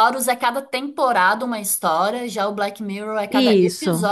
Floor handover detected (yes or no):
yes